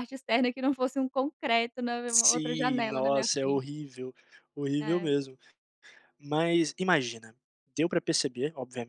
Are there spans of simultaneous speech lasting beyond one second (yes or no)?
yes